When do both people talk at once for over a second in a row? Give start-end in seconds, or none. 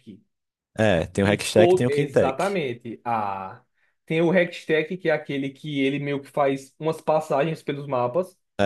1.2-2.6